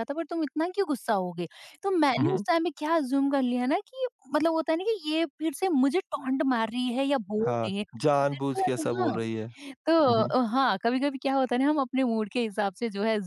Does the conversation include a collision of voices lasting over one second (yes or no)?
yes